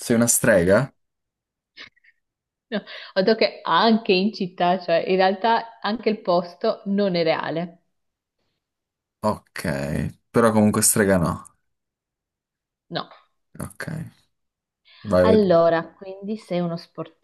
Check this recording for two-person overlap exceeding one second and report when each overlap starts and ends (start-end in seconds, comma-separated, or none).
none